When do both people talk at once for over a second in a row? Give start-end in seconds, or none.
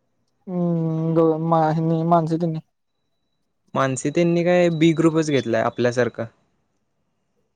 none